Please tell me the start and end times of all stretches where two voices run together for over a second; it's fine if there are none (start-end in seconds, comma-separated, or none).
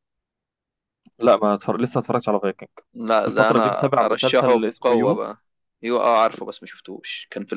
3.3-5.2